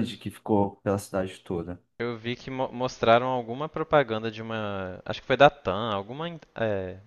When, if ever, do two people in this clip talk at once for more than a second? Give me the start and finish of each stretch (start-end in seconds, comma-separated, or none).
none